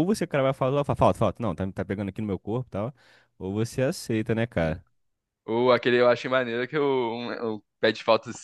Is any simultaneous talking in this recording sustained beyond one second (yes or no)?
no